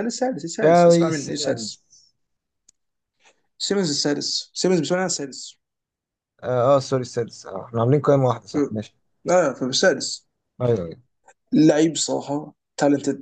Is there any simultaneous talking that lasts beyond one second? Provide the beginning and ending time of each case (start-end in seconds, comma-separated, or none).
0.6-1.8